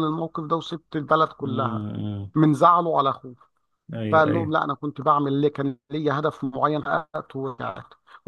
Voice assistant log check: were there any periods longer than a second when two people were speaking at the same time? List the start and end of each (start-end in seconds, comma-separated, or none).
none